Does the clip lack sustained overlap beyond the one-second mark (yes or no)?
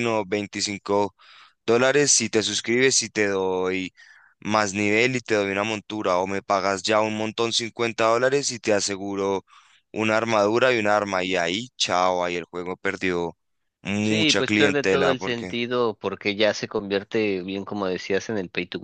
no